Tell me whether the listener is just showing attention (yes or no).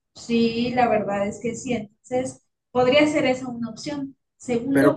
yes